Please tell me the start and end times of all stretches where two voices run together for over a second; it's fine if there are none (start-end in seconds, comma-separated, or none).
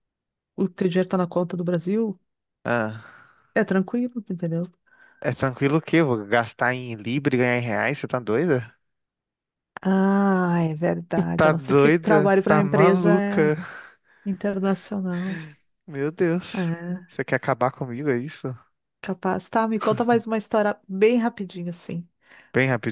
11.3-13.5